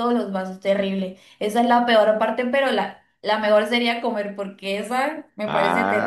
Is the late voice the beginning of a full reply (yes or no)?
yes